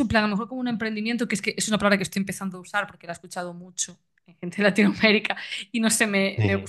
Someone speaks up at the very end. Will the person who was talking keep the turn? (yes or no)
yes